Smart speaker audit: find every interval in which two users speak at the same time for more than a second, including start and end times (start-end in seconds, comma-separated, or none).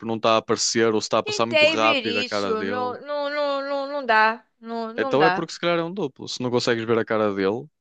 1.2-2.9